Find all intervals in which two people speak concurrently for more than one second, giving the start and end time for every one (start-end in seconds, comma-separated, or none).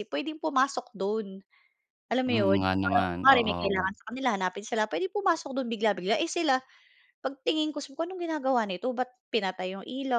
2.3-3.9